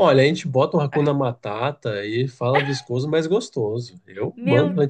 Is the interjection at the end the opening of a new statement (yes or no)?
no